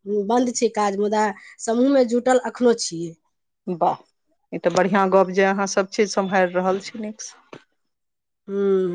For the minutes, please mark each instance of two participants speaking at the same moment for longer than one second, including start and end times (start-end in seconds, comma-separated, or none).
none